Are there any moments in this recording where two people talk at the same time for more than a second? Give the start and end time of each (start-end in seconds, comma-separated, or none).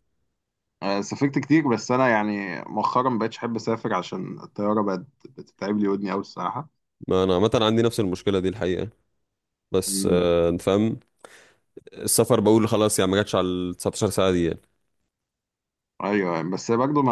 none